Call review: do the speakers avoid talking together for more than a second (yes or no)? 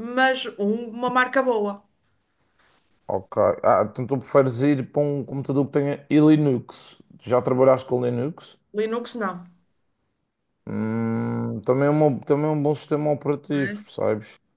yes